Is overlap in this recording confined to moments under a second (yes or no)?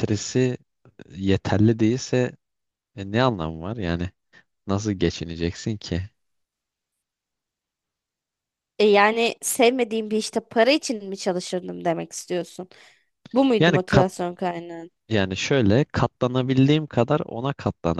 yes